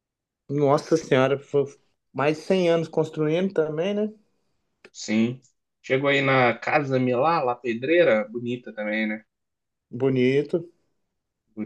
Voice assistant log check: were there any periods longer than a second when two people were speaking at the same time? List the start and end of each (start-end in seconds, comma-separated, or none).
none